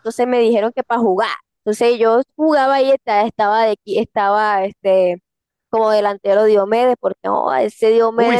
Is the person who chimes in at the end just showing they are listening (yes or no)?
no